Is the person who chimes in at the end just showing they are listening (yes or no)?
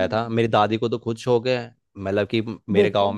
yes